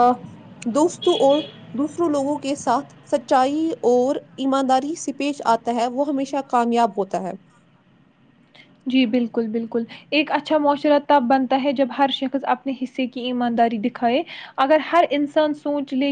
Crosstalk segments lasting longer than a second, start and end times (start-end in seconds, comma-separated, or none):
none